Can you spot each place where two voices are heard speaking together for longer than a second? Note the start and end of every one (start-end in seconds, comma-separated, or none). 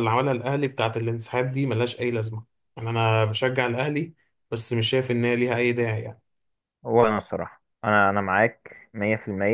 none